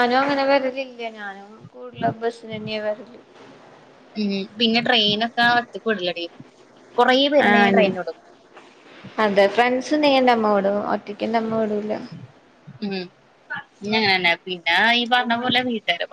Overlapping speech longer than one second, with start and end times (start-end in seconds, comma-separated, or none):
none